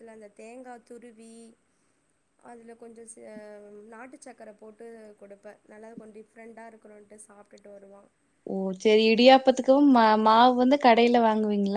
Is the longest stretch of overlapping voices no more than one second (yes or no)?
yes